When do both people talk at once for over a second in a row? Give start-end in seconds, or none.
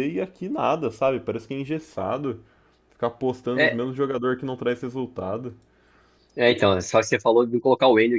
none